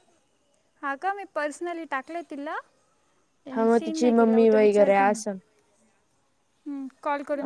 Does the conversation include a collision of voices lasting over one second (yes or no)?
yes